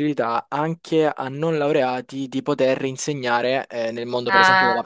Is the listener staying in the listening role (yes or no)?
yes